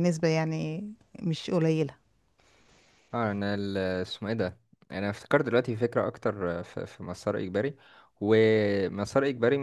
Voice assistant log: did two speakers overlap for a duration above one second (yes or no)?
no